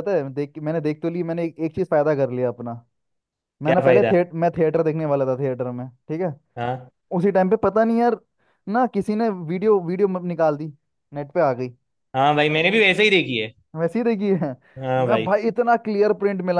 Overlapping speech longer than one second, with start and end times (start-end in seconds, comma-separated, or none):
none